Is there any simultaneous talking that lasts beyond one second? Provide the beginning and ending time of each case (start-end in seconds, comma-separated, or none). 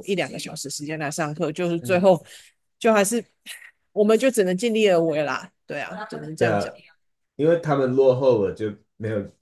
none